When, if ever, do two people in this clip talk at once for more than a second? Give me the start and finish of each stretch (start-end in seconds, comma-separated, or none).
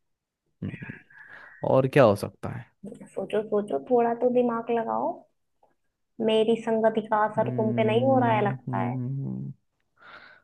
7.4-8.9